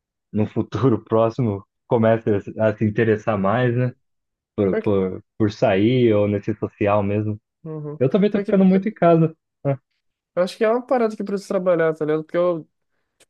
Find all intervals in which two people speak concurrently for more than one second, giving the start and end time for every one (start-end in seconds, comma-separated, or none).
none